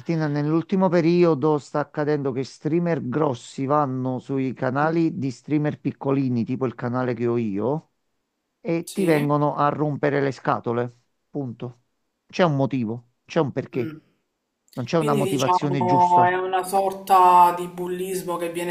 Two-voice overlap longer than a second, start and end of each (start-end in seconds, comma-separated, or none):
14.9-16.4